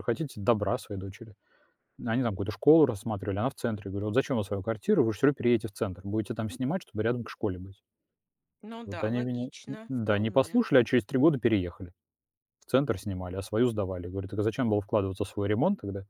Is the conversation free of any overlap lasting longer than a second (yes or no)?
no